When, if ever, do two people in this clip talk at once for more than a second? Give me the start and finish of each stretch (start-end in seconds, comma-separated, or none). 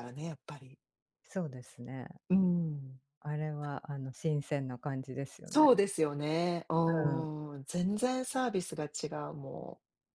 none